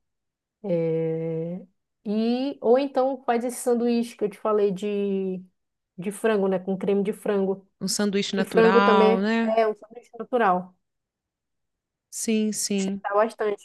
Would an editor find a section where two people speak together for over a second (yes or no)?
yes